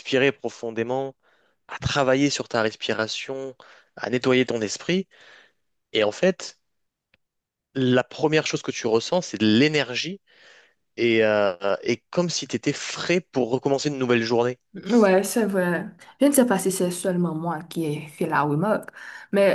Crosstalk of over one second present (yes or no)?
no